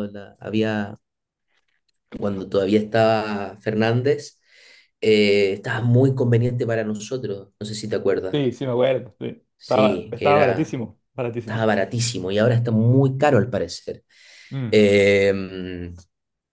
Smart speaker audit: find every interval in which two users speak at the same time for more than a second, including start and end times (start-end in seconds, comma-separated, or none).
9.6-10.8